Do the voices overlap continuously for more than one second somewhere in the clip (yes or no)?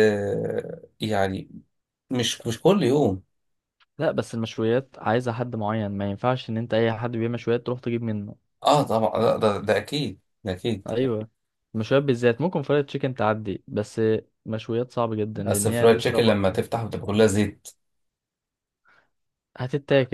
yes